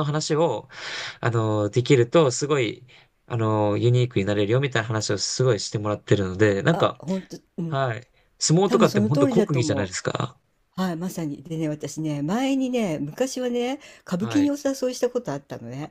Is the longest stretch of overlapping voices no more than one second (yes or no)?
no